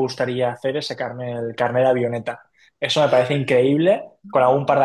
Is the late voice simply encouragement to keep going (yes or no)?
yes